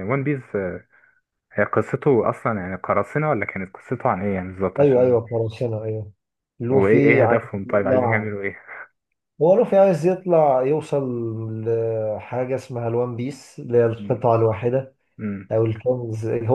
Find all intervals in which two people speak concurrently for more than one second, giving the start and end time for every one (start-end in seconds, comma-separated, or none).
6.7-8.3